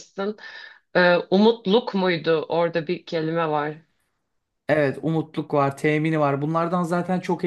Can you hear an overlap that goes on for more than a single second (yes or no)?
no